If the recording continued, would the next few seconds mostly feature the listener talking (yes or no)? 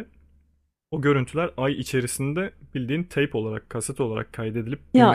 yes